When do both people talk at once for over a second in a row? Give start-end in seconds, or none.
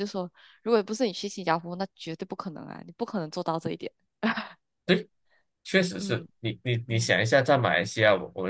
none